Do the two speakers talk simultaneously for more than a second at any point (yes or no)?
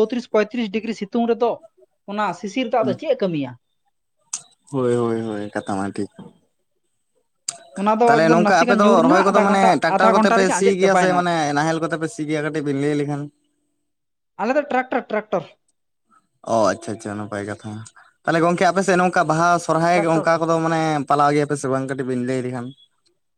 yes